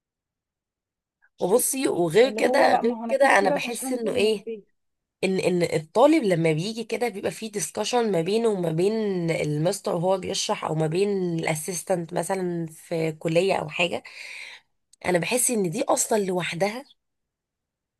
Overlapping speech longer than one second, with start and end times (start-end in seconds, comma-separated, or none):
2.2-4.5